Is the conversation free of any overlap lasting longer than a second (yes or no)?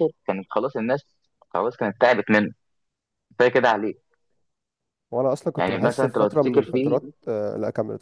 no